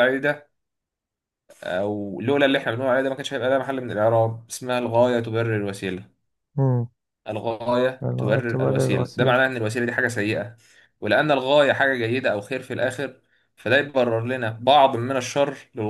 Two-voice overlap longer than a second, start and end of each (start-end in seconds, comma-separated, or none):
8.0-9.4